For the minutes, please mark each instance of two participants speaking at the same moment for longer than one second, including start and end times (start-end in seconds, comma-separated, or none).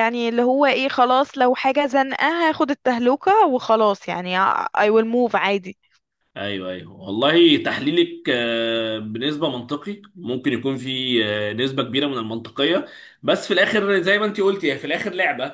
none